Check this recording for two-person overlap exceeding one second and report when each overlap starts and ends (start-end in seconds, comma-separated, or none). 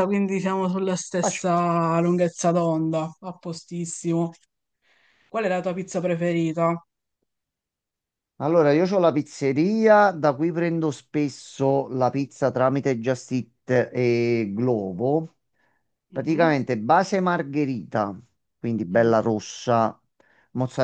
none